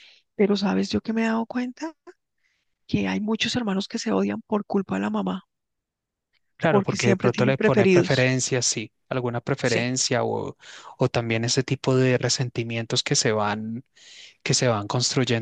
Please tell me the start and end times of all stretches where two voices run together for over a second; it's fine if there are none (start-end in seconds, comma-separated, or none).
6.7-8.3